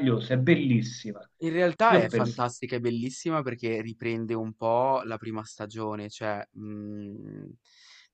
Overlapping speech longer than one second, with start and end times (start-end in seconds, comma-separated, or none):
none